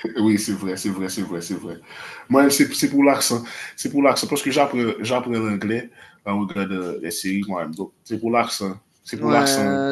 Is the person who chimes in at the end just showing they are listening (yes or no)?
no